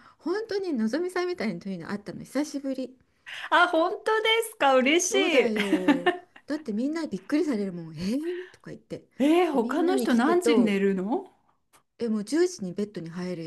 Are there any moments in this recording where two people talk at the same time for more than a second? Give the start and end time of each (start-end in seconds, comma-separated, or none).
9.5-10.8